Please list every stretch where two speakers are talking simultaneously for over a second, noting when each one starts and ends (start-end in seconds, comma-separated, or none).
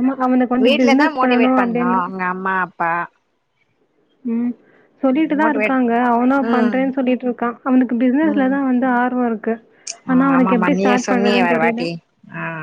10.4-11.8